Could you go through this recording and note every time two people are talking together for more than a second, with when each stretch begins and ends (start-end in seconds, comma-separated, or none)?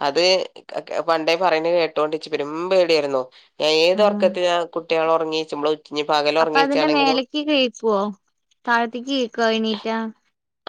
none